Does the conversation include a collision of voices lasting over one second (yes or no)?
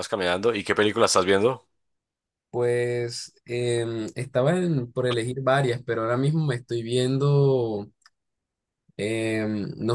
no